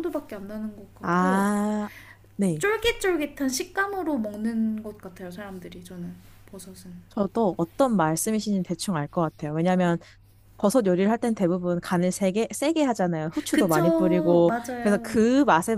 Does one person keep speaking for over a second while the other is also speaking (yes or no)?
yes